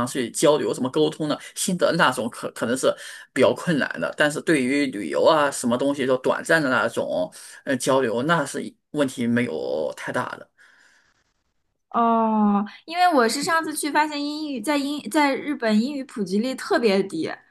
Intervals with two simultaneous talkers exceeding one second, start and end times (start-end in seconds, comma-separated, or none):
none